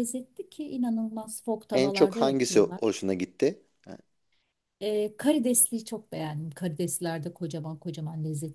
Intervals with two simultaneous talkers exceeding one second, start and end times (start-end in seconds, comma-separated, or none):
1.7-3.0